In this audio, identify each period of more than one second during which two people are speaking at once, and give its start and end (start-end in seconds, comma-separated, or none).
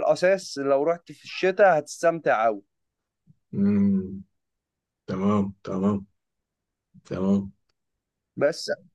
none